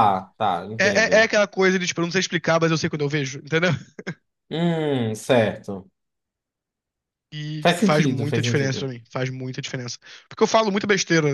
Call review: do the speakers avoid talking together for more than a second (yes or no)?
no